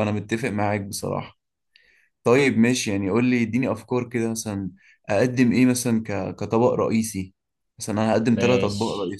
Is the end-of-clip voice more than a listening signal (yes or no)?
yes